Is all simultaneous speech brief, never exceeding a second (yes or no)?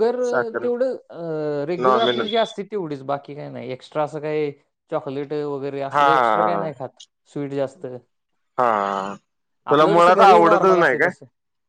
no